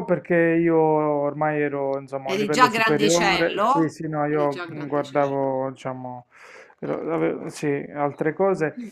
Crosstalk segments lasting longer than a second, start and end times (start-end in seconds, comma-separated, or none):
2.3-5.5